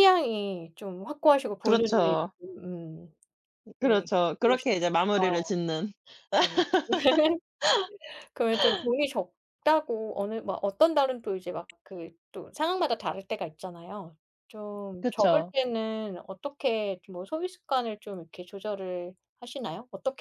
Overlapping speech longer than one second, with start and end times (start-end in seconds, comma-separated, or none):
3.8-5.5